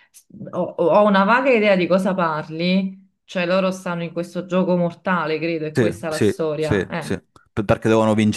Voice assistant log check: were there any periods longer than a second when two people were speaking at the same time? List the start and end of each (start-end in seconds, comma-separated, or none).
5.7-7.2